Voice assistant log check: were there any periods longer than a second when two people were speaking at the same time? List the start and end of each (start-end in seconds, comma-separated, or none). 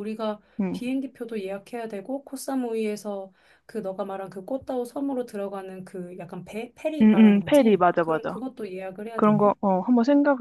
7.0-8.4